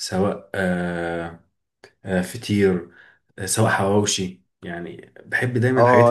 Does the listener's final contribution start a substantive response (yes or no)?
yes